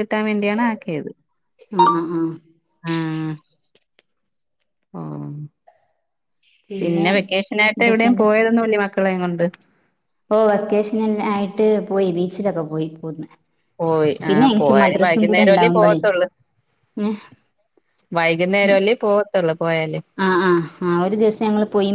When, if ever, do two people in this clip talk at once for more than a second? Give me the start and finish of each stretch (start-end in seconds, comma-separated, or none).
14.3-16.0